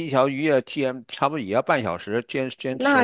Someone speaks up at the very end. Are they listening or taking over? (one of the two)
listening